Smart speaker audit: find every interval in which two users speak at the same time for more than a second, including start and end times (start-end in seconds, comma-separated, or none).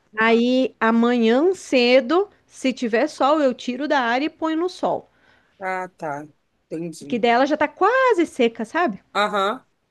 none